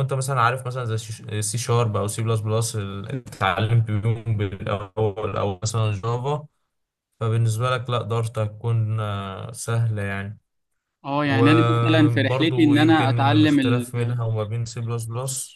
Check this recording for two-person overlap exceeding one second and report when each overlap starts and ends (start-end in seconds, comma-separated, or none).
11.2-13.9